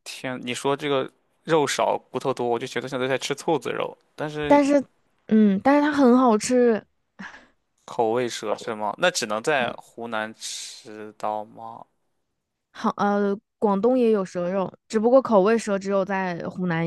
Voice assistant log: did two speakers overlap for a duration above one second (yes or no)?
no